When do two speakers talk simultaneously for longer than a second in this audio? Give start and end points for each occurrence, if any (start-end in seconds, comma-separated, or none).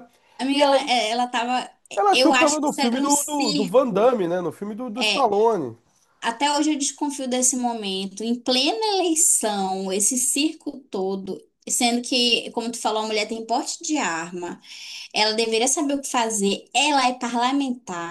1.9-4.1